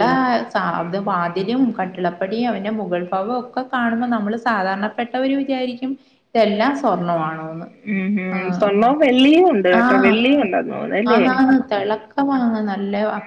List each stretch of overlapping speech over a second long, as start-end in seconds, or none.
8.4-9.8